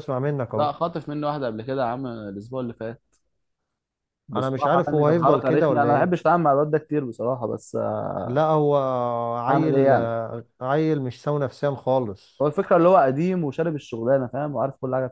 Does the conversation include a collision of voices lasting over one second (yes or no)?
yes